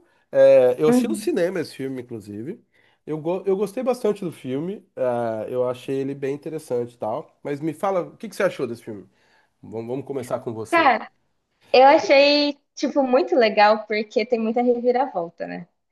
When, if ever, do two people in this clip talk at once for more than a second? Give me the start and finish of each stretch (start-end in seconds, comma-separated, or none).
none